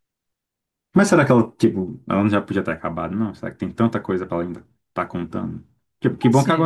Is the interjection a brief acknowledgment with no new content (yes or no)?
yes